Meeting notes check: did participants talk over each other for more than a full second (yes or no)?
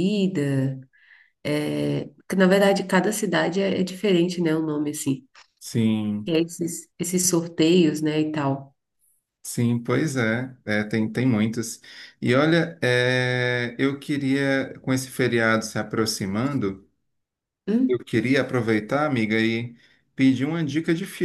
no